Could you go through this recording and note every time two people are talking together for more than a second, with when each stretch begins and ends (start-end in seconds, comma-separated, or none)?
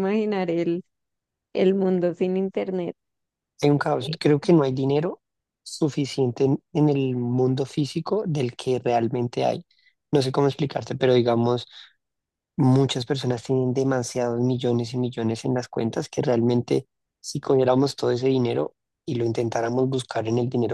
none